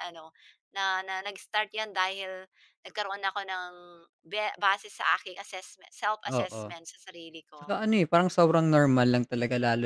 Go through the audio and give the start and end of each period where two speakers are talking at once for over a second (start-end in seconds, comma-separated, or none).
none